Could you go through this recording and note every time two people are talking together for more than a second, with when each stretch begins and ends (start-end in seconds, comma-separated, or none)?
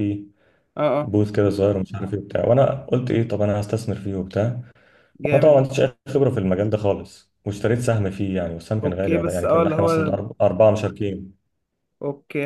8.8-10.2